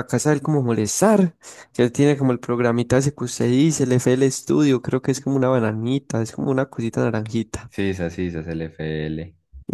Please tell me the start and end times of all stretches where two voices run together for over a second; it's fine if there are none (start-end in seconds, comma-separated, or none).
none